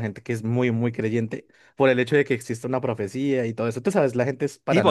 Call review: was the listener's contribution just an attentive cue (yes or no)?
no